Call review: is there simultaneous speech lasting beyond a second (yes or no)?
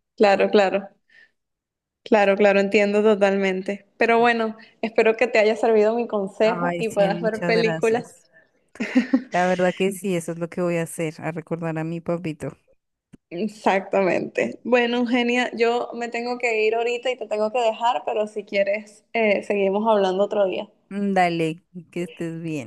yes